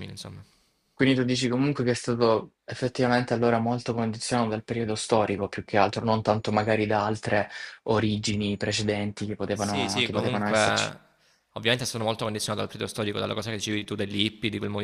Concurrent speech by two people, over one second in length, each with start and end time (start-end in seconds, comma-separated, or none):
9.5-10.9